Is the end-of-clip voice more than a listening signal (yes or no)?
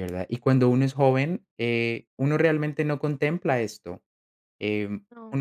no